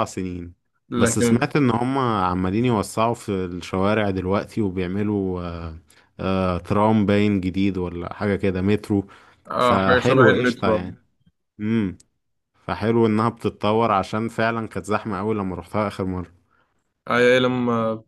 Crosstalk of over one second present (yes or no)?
yes